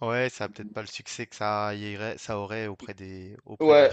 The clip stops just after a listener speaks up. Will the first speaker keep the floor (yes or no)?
no